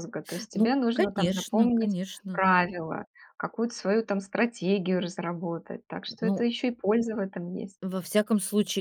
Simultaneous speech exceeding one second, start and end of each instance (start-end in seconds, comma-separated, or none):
0.5-2.4